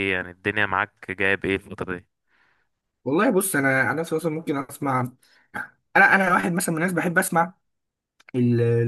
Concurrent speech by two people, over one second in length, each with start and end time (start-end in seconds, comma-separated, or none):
none